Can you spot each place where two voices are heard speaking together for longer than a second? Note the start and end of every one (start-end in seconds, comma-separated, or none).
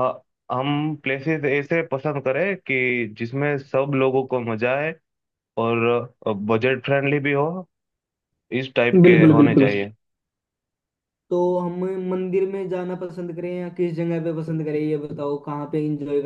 none